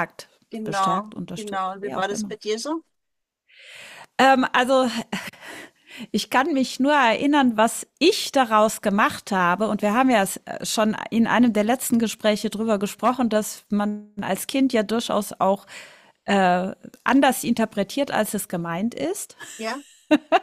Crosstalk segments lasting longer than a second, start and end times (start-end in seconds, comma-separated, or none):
0.5-2.4